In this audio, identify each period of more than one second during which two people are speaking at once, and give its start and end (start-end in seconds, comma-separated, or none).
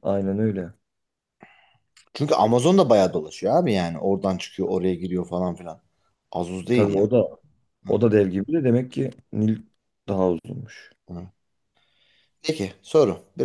none